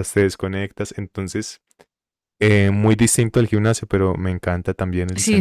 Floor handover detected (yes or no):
yes